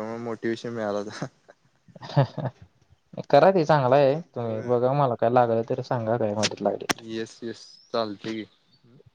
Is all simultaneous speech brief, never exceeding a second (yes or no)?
yes